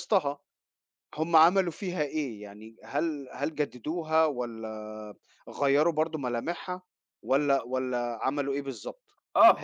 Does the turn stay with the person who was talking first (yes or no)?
no